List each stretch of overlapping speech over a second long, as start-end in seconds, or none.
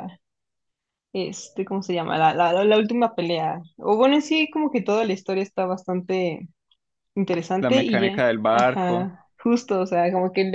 7.6-9.1